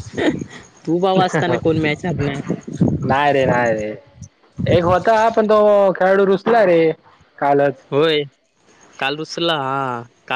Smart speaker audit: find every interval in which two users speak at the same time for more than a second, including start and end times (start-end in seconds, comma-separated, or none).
none